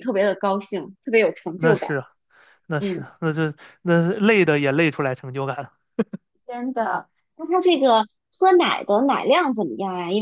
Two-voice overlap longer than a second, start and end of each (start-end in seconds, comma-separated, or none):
none